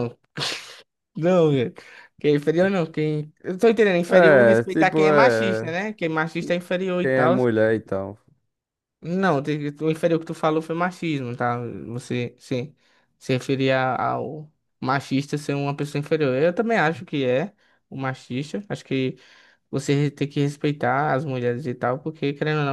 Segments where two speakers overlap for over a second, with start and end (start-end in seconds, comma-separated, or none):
4.1-5.7